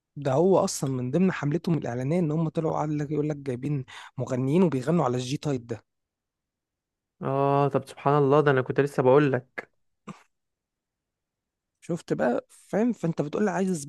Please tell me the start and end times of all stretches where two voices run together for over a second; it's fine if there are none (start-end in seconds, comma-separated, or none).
none